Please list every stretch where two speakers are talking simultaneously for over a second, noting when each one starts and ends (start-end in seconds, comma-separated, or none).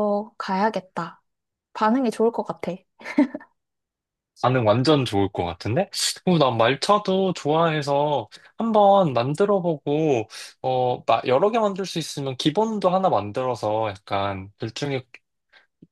none